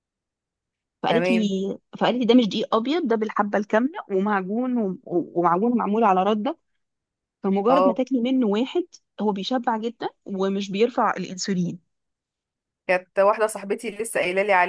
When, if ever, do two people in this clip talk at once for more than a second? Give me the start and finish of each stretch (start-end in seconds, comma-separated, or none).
none